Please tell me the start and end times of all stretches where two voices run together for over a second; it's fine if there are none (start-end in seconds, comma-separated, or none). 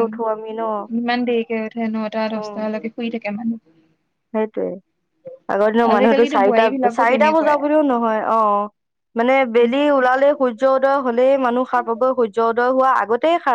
5.9-7.5